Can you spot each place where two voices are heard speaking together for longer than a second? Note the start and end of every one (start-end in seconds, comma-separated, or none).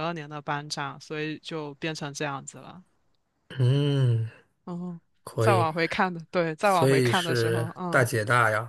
6.6-8.1